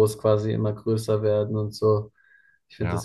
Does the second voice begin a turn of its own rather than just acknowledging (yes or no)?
no